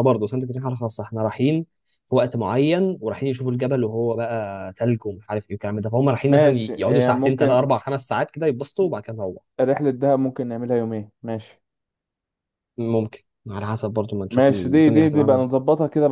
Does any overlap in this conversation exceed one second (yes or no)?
yes